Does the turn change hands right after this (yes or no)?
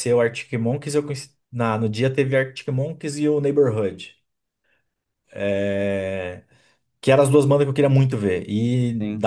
no